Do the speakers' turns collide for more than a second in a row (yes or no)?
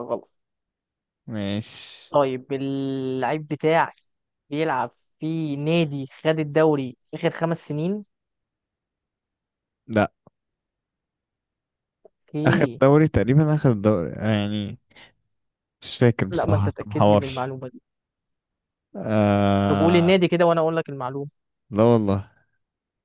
yes